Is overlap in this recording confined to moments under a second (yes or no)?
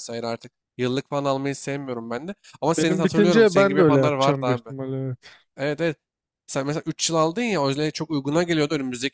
no